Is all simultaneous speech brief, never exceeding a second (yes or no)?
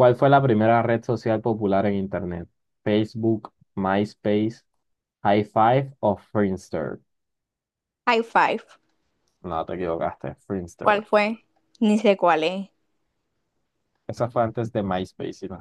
yes